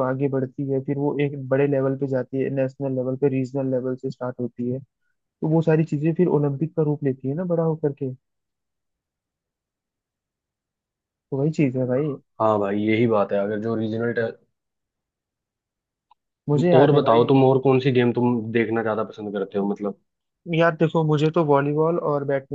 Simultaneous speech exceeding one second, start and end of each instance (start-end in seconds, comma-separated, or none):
none